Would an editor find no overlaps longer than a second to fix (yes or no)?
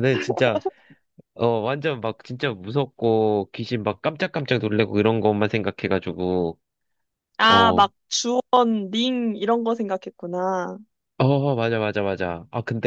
yes